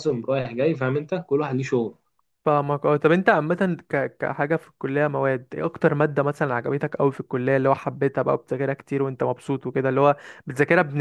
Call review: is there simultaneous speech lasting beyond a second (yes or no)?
no